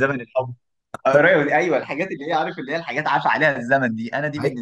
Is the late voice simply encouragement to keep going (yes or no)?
no